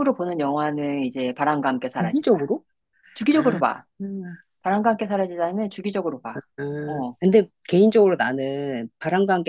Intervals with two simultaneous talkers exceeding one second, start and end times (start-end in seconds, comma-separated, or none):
none